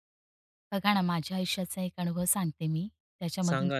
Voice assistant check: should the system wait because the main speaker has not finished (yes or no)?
yes